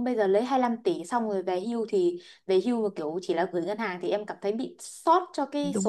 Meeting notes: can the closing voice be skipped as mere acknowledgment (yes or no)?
no